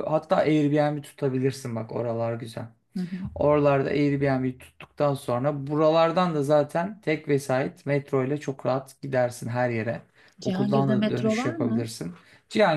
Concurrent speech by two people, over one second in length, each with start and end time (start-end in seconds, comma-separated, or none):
10.4-11.9